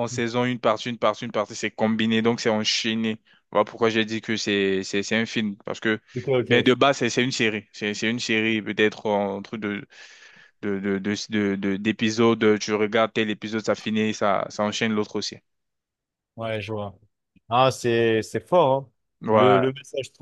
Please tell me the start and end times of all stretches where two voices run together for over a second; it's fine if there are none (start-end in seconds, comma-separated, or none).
none